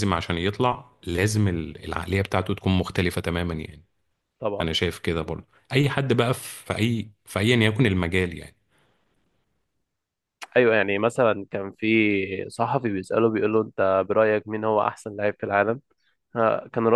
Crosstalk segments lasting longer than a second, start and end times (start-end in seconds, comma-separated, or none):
none